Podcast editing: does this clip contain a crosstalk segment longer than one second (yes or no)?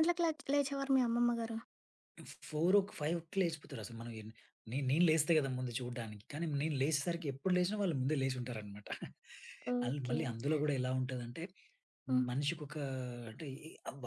no